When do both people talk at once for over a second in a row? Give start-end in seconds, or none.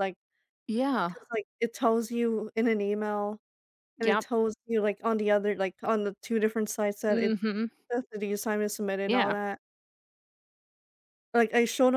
none